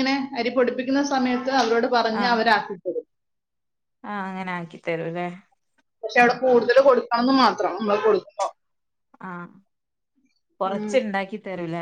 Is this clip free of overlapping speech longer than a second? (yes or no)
yes